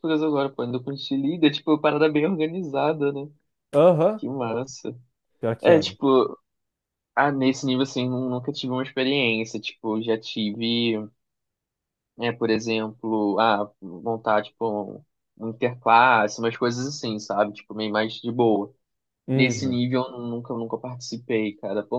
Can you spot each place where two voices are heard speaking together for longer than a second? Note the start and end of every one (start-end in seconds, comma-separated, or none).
none